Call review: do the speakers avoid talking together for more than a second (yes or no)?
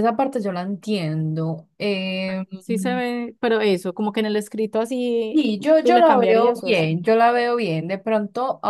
no